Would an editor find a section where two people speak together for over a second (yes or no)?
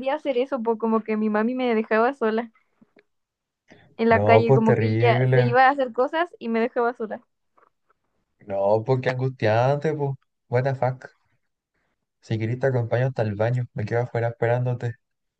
yes